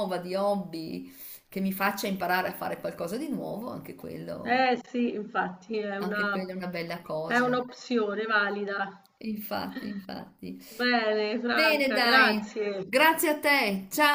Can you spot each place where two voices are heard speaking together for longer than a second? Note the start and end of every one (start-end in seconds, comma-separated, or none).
11.4-12.9